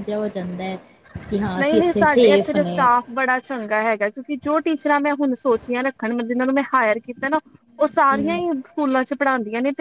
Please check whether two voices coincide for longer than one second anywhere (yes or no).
yes